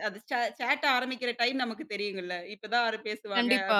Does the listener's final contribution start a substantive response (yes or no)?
no